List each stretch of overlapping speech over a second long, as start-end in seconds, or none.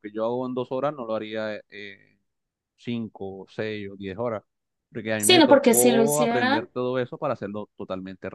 5.2-6.7